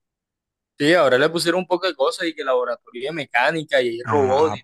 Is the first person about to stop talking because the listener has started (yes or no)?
yes